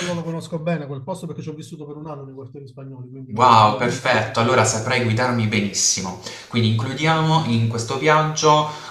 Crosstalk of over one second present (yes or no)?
yes